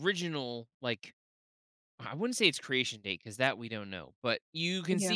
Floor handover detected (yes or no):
no